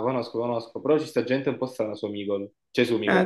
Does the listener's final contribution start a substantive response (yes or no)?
no